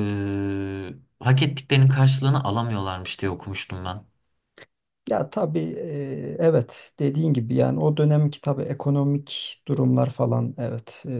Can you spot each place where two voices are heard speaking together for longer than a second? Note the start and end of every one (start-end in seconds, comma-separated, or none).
none